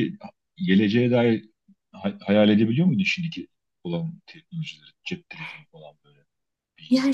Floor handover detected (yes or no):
yes